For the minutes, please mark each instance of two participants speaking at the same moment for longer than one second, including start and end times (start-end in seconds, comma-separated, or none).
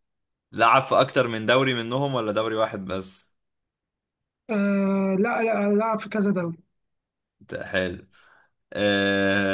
none